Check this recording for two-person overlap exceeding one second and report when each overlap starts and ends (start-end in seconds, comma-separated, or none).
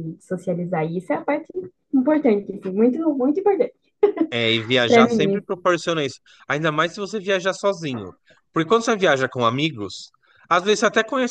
none